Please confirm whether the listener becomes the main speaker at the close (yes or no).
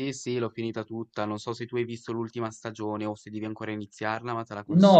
yes